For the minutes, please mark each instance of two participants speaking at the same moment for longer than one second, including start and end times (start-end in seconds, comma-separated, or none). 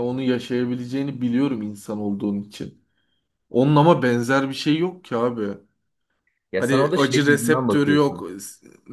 6.6-8.3